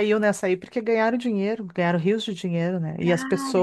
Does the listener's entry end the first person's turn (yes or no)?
no